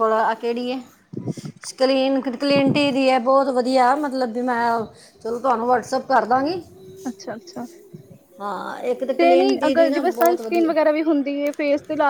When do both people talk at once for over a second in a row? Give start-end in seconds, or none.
9.2-10.7